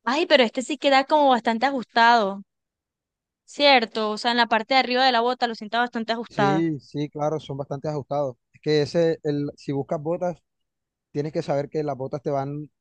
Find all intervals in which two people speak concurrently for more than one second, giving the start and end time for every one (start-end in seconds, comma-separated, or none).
none